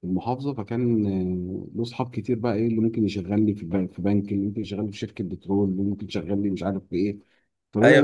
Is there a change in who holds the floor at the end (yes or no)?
yes